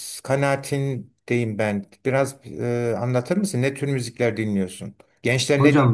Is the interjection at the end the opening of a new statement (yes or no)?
yes